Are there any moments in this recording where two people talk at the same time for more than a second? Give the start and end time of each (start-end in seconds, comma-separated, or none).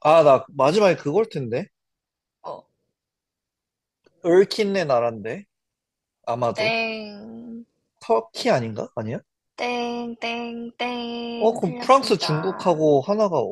11.4-12.8